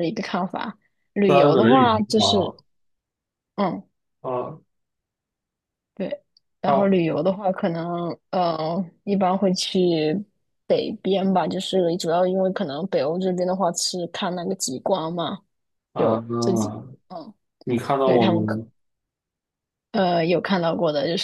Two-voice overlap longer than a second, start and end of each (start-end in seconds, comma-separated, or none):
1.3-2.5